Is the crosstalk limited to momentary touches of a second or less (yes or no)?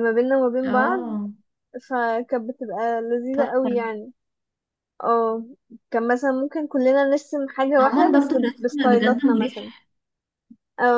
no